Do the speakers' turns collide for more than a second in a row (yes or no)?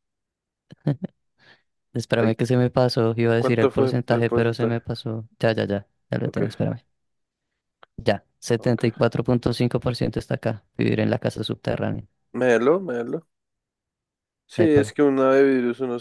yes